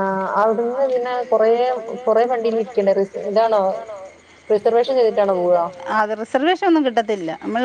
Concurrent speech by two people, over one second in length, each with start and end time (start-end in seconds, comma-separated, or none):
none